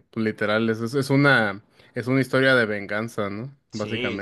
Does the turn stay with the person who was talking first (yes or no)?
no